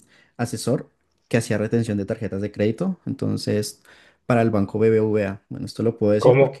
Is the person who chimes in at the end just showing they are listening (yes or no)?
no